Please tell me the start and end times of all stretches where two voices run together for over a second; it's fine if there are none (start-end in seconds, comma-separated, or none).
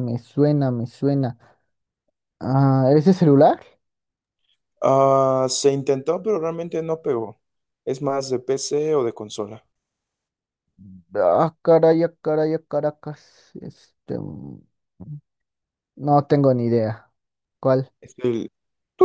none